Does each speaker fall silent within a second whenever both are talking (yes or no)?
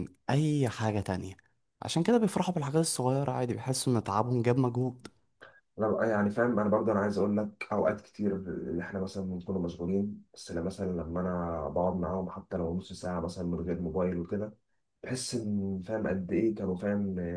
yes